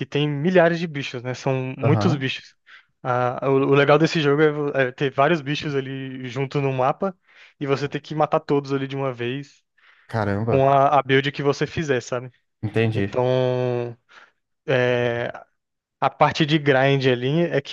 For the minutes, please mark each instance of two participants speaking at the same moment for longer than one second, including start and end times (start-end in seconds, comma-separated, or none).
none